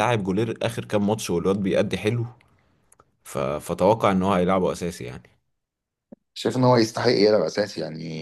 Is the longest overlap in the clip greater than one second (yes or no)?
no